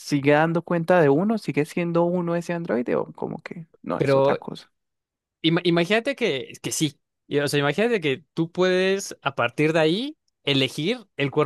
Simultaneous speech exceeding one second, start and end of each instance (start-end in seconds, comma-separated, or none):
none